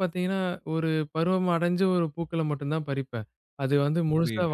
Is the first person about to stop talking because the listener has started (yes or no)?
no